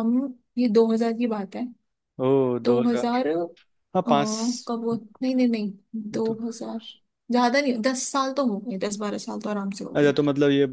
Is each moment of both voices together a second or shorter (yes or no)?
yes